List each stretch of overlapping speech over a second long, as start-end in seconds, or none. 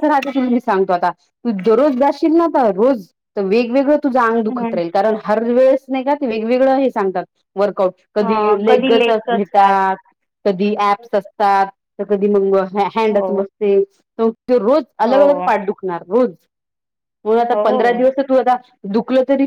8.1-9.8